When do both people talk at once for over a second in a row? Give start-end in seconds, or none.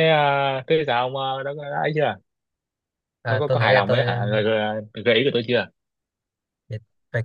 3.2-4.4